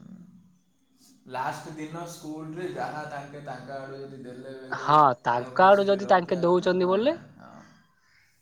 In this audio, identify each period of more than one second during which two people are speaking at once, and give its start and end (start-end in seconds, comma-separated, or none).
5.6-7.1